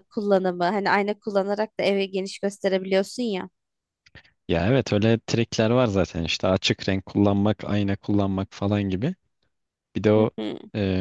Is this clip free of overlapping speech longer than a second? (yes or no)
yes